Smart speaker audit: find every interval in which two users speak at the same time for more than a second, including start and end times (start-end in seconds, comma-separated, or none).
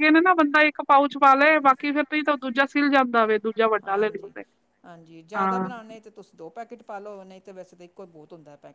none